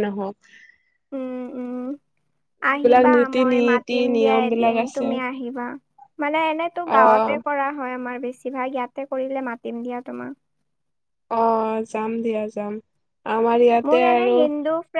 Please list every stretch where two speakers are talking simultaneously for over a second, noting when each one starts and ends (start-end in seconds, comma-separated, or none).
2.7-5.0